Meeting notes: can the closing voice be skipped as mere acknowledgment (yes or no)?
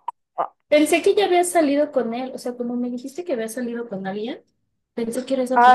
no